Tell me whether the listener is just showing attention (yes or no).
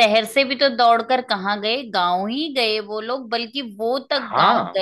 yes